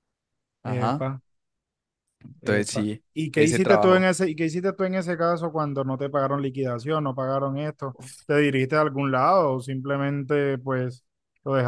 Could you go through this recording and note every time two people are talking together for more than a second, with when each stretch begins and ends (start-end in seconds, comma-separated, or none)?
2.4-4.1